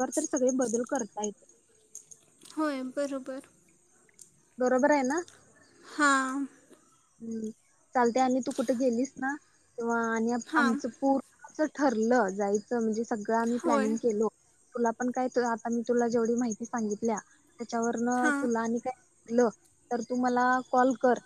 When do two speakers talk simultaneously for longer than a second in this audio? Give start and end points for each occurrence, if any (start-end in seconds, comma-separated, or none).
none